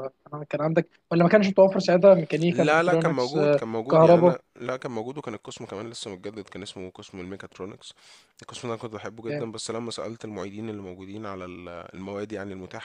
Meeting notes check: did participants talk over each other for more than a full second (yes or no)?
yes